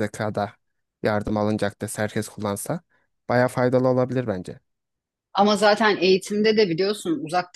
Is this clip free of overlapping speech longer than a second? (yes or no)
yes